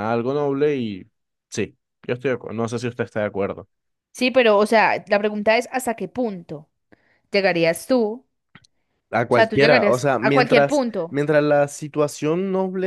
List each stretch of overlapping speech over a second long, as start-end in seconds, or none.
9.3-11.2